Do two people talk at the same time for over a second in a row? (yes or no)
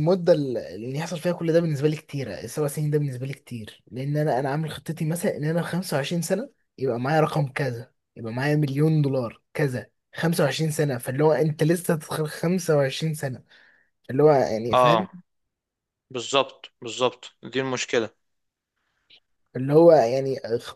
no